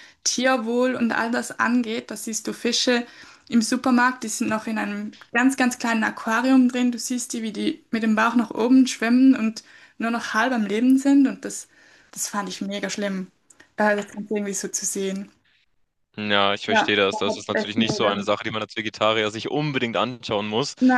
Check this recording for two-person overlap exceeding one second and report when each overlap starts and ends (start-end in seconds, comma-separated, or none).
16.6-18.2